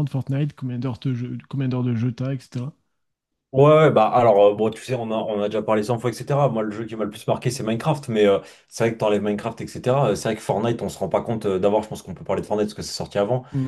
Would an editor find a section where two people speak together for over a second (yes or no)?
no